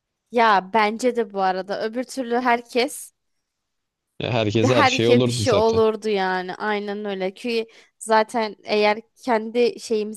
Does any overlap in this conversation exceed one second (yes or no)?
yes